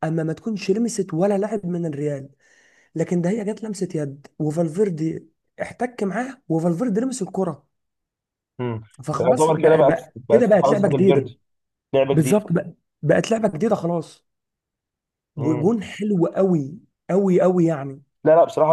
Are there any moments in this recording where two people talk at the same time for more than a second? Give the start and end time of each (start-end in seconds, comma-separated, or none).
9.2-11.2